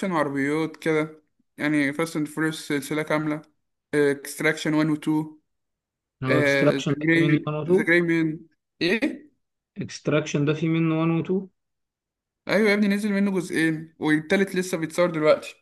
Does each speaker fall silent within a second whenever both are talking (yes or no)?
no